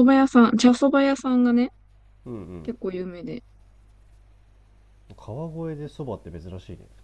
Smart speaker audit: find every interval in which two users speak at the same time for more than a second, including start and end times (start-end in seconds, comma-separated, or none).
none